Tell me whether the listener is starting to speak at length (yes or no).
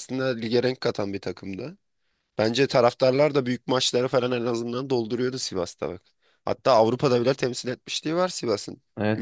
yes